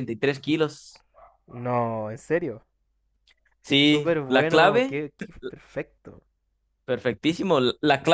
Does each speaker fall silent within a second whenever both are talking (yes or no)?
no